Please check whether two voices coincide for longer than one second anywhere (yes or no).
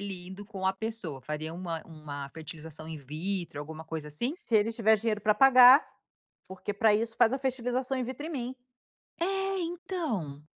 no